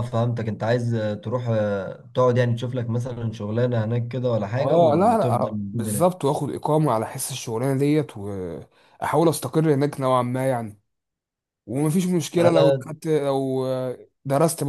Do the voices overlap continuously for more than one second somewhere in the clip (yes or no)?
yes